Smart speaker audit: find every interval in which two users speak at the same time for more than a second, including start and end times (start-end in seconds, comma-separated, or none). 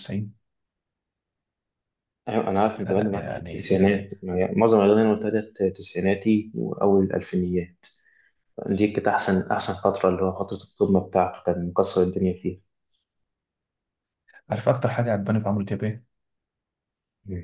2.9-4.1